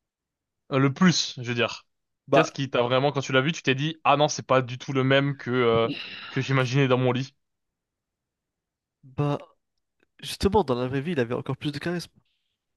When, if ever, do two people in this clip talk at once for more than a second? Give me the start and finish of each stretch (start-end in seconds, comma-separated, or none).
none